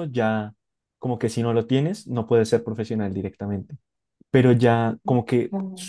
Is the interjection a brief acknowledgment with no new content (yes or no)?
yes